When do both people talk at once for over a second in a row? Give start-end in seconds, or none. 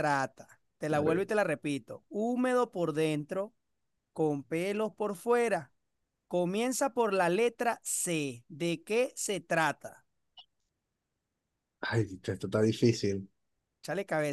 none